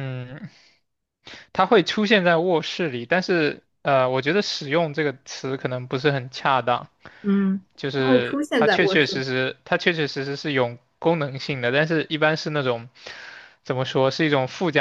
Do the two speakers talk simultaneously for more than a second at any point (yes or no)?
yes